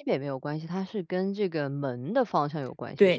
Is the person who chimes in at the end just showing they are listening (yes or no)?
no